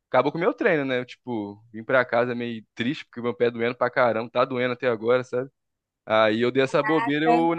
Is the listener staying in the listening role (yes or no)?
yes